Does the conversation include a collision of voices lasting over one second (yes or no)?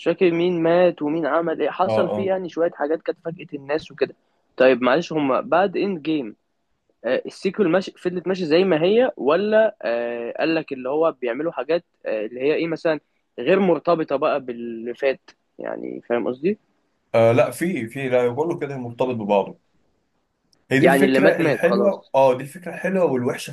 yes